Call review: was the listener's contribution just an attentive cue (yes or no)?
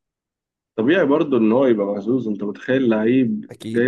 yes